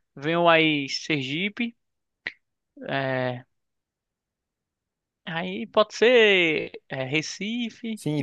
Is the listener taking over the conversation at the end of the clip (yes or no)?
yes